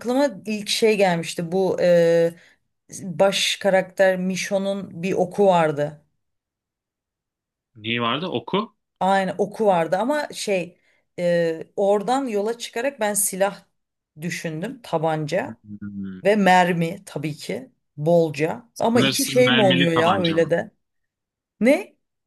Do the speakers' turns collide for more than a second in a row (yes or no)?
yes